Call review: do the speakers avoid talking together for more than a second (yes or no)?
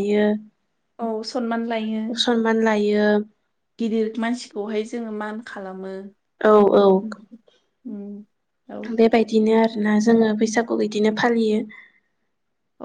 yes